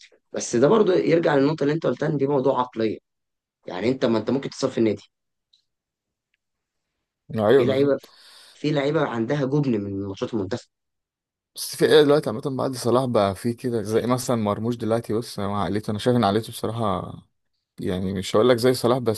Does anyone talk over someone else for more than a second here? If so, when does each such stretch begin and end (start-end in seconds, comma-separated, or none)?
none